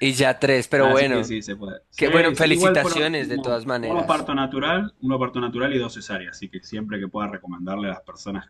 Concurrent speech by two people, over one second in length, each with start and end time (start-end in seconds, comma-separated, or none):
2.0-4.3